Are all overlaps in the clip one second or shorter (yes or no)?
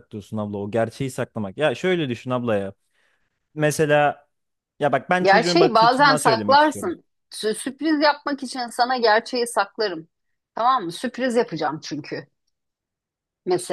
no